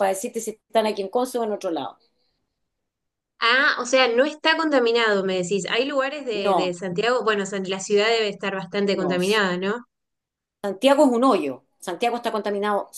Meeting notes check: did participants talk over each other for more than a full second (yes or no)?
no